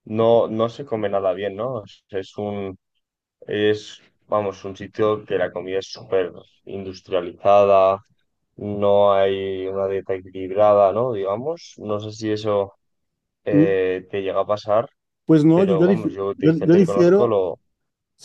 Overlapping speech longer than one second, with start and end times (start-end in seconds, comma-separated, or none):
15.5-17.4